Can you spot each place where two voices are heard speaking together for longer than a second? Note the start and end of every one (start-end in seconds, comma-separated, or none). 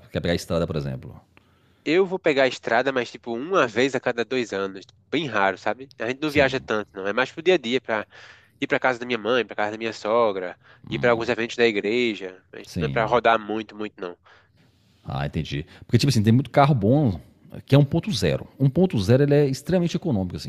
none